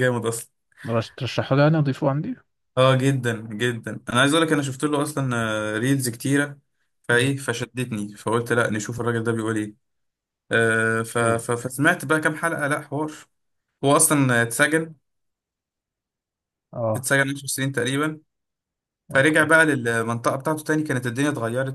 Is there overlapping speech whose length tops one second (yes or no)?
no